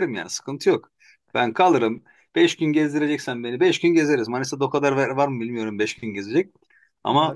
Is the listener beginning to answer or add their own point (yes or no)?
no